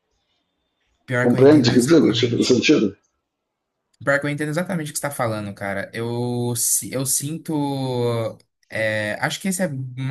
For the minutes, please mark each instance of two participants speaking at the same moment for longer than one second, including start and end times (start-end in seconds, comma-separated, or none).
1.2-2.6